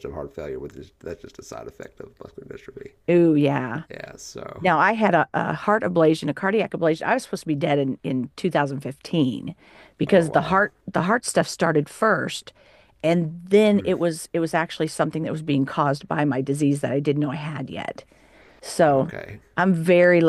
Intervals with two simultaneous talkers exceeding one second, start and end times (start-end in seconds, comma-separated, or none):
none